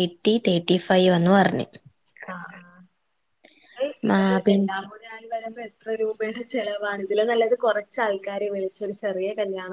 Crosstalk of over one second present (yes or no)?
no